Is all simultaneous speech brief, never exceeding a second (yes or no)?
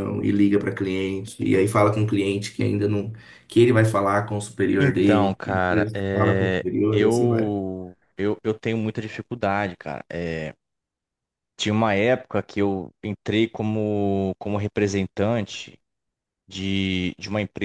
no